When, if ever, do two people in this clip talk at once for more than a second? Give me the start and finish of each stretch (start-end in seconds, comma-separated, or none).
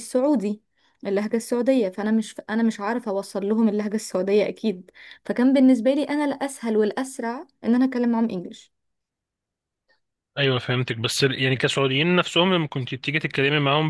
none